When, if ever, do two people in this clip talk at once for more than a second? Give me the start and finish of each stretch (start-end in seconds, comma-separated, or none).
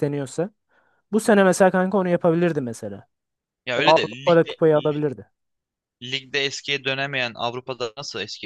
3.7-5.0